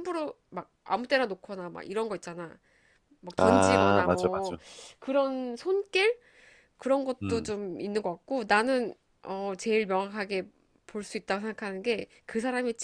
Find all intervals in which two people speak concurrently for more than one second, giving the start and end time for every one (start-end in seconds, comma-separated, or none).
3.4-4.6